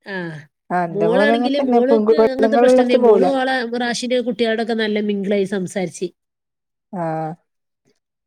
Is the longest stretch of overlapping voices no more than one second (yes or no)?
no